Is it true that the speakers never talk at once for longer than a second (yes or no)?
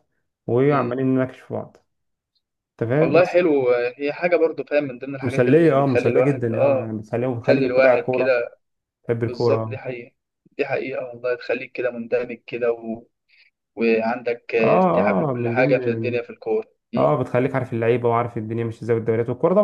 no